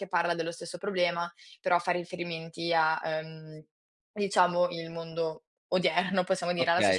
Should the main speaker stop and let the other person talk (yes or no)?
yes